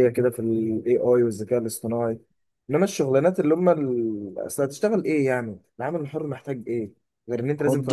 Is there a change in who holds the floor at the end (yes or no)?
yes